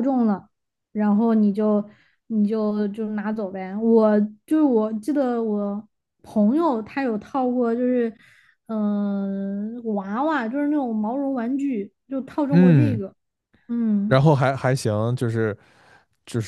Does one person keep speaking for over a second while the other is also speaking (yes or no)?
no